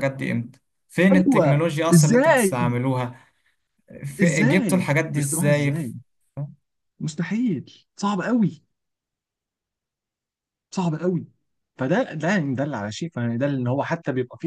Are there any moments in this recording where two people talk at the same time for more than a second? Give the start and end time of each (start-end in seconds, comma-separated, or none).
1.1-2.4, 4.2-5.7